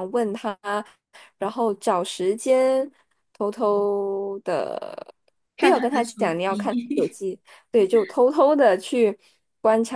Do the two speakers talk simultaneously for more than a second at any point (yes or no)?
yes